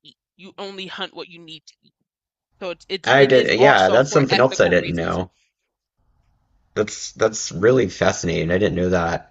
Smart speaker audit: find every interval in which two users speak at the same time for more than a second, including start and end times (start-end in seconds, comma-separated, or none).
3.0-5.2